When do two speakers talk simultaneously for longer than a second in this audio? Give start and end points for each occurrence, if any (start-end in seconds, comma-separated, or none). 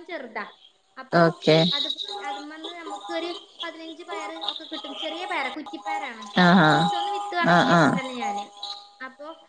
6.7-8.0